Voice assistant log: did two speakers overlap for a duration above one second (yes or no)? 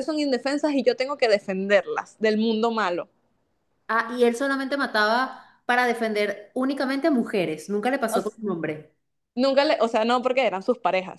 no